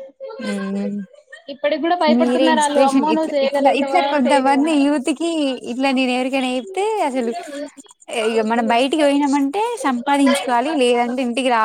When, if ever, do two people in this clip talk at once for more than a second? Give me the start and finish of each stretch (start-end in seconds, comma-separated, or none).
2.1-4.7